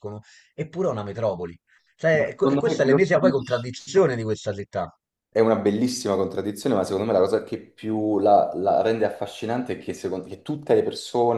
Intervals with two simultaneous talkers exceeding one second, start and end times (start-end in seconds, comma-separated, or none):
2.1-3.7